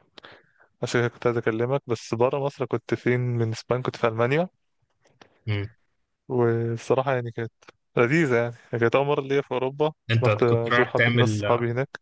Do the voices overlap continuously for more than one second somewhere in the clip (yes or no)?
yes